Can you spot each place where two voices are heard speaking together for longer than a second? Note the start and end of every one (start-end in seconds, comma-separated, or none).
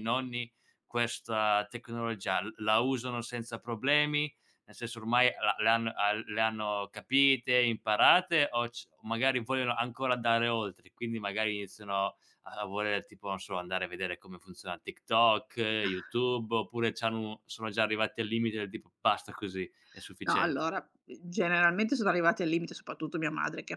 none